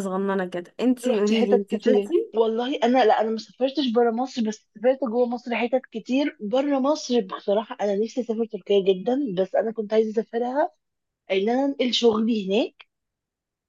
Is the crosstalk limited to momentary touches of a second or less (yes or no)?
no